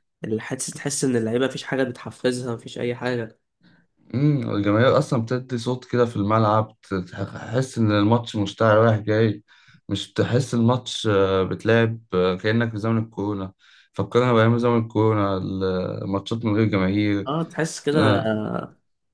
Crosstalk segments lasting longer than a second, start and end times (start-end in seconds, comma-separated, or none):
none